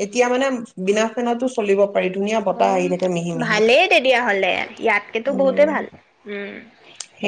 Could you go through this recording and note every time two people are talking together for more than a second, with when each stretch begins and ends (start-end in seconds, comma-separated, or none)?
none